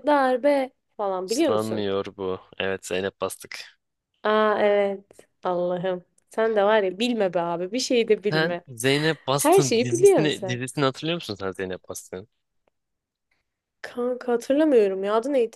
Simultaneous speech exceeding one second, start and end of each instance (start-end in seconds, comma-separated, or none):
9.4-10.6